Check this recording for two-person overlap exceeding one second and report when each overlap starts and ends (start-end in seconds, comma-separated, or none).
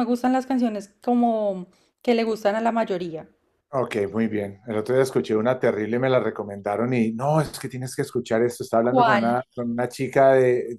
none